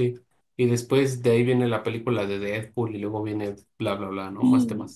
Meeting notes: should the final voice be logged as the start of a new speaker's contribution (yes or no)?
yes